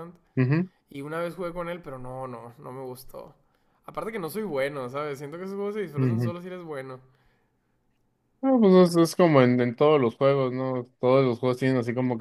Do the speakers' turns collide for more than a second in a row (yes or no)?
no